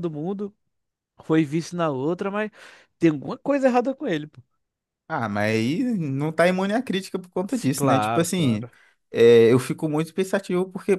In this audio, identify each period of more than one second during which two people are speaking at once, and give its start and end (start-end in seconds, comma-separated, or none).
7.5-8.7